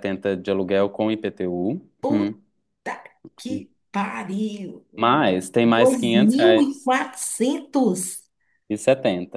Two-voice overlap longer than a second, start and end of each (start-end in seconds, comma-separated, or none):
5.6-6.9